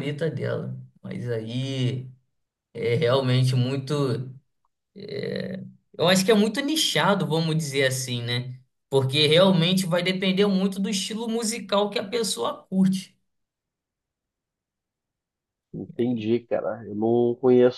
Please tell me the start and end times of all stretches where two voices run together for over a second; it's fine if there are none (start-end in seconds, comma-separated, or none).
none